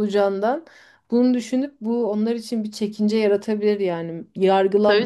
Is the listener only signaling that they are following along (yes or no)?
yes